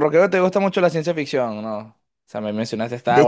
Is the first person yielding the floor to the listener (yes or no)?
yes